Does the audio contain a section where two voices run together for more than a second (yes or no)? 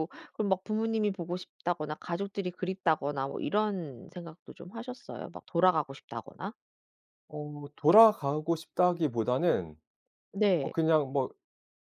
no